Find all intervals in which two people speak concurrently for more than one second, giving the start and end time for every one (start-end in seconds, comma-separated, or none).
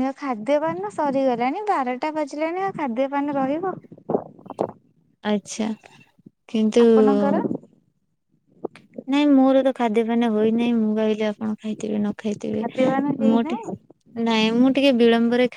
none